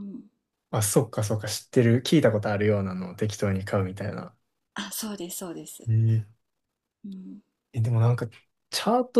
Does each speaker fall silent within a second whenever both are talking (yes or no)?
yes